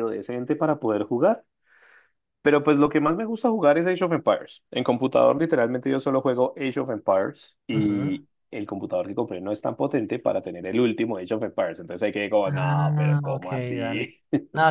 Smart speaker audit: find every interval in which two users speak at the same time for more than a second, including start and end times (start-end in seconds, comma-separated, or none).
12.4-14.1